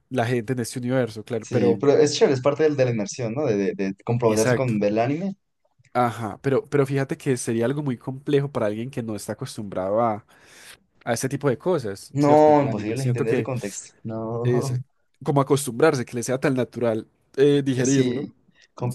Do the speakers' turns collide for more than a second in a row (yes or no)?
yes